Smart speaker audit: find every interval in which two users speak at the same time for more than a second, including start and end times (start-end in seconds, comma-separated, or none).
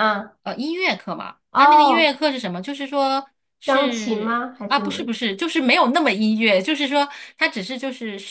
3.6-5.0